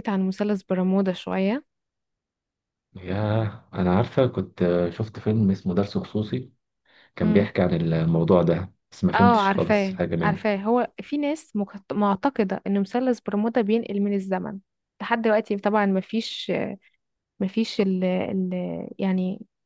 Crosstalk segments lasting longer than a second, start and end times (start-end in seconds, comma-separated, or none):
9.1-10.5